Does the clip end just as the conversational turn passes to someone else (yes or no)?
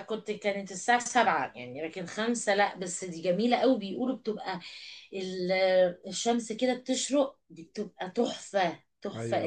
yes